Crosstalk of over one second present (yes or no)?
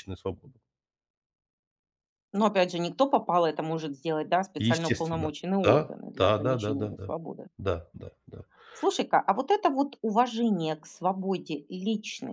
yes